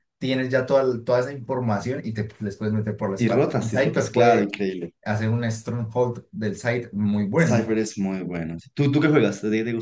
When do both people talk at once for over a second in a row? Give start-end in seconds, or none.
3.2-4.5